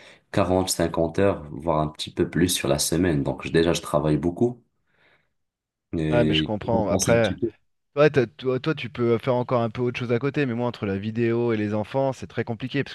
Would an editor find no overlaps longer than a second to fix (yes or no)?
no